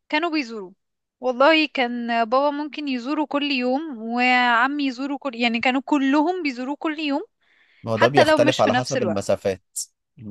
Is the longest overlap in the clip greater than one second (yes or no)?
yes